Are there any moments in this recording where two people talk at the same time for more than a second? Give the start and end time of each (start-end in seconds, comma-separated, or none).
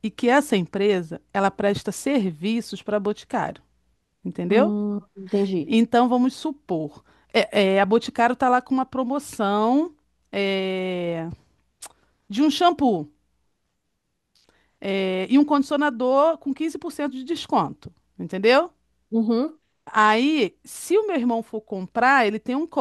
none